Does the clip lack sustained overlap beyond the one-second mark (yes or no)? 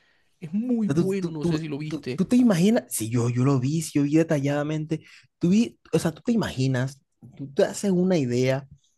no